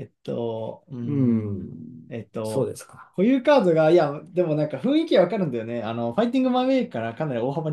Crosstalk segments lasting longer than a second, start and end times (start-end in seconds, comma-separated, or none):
1.0-2.7